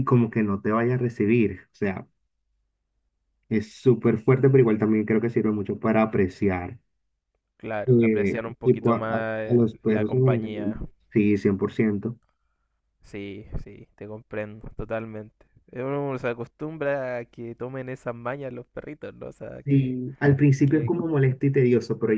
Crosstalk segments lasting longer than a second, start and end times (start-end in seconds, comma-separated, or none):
7.8-10.8